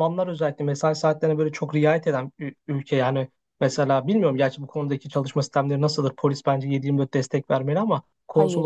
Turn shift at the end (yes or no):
no